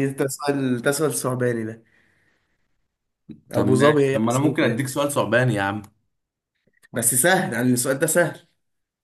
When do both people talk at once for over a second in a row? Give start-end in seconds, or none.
3.5-5.0